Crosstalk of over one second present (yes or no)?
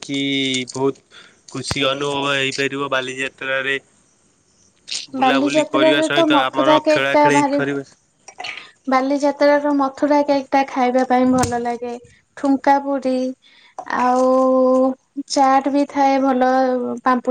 yes